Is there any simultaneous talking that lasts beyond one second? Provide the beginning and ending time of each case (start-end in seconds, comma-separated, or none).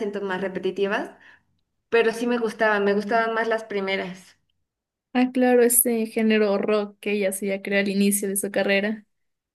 none